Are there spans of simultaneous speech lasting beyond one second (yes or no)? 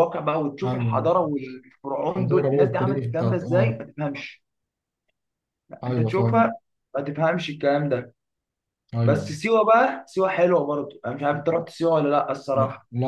yes